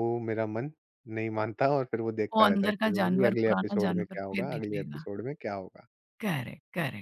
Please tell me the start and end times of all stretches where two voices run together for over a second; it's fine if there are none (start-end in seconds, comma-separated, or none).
2.4-5.0